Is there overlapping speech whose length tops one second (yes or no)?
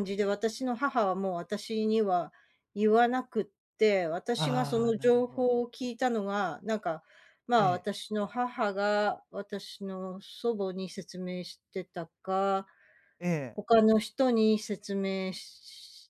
yes